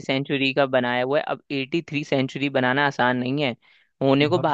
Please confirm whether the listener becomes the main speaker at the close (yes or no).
no